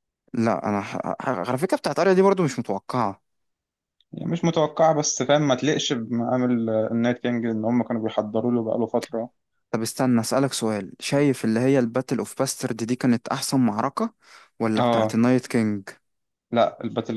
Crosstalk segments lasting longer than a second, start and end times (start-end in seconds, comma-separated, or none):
none